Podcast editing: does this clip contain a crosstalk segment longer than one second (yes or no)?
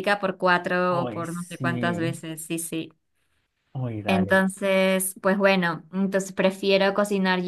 yes